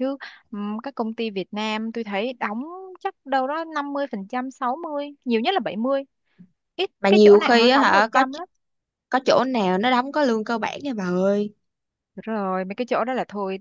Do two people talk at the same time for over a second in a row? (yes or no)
yes